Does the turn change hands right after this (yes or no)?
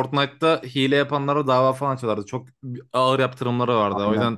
no